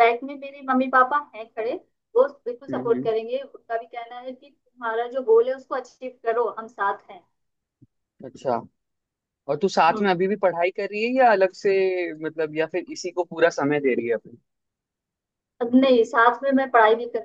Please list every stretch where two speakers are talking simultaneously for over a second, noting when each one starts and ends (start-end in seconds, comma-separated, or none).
none